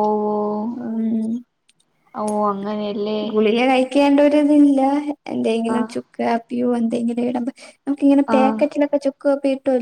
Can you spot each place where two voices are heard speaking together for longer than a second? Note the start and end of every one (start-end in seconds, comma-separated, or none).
none